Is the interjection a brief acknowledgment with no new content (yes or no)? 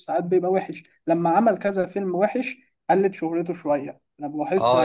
no